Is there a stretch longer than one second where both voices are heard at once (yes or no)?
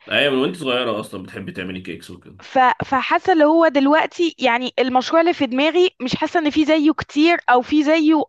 no